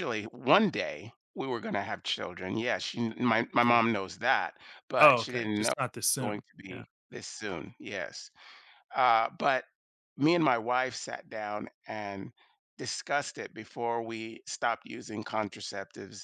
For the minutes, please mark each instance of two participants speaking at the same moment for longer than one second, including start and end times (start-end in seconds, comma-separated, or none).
5.0-6.8